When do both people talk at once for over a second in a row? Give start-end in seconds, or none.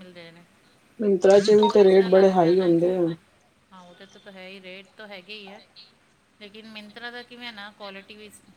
1.2-2.9